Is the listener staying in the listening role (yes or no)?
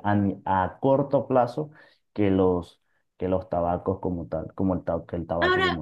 no